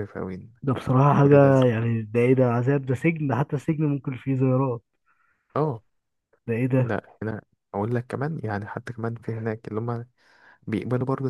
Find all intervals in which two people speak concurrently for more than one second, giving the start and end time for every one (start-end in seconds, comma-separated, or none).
none